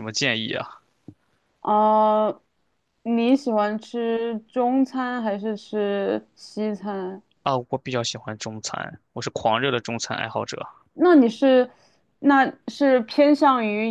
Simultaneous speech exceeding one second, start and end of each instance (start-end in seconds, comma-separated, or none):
none